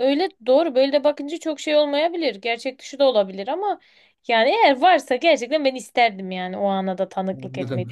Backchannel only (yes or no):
no